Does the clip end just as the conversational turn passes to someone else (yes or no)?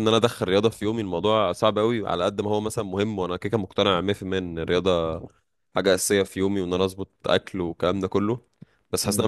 no